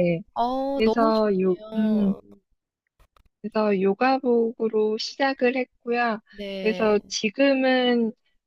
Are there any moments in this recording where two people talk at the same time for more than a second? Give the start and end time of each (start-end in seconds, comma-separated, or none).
0.7-2.1